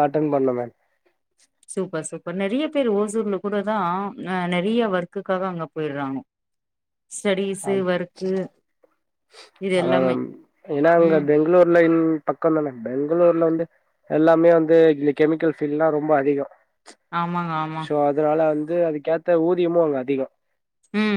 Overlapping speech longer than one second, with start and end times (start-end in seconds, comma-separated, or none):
none